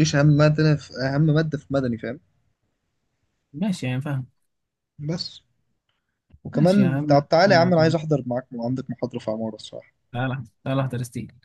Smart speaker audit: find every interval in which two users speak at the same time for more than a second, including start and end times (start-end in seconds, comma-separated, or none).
6.5-8.0